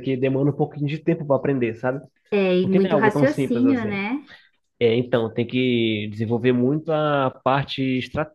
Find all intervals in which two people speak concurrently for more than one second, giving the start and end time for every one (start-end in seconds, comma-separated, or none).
2.6-4.0